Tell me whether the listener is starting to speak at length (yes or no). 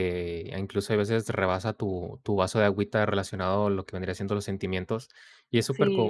no